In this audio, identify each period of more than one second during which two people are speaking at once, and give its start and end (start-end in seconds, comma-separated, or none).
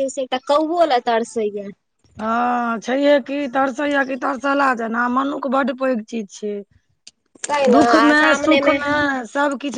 none